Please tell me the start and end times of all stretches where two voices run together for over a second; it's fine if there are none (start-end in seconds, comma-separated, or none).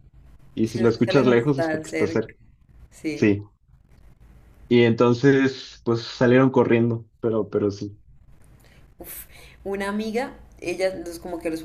0.6-2.2